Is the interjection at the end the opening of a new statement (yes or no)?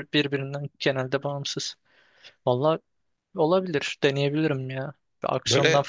no